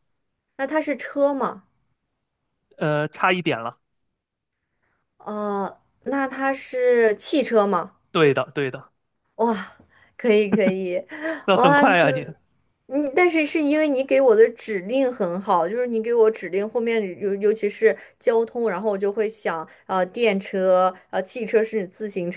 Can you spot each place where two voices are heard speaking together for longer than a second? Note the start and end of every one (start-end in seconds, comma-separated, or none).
none